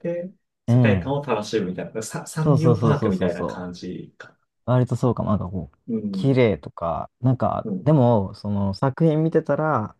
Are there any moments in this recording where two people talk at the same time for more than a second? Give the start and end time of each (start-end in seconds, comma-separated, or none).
2.4-3.7